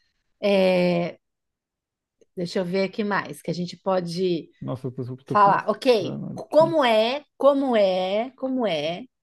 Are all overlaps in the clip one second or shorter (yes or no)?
no